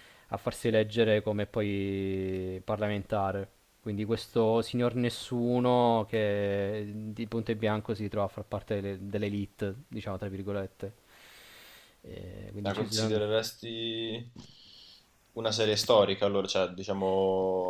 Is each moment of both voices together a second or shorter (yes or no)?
yes